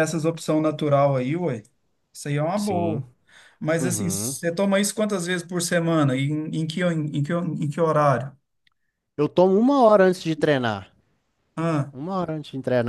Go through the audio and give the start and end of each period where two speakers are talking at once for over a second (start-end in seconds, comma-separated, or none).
none